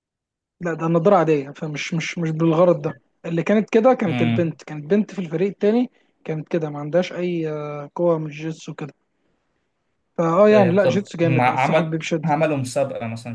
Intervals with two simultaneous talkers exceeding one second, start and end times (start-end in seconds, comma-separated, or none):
10.5-12.3